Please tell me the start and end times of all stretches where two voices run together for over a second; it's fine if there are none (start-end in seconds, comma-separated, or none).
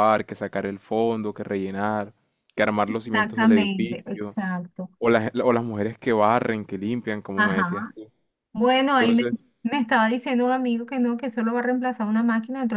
2.9-4.4